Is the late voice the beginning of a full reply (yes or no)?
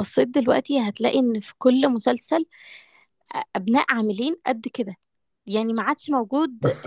no